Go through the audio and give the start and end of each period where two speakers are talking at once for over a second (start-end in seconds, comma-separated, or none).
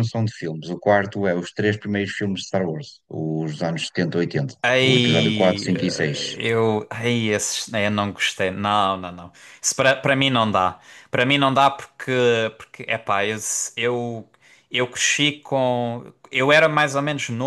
4.6-6.4